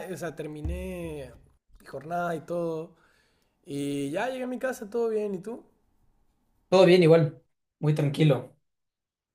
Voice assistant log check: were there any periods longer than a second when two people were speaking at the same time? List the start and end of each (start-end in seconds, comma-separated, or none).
none